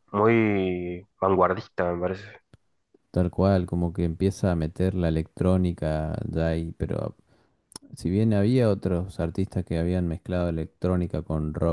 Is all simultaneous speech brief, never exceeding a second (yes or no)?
yes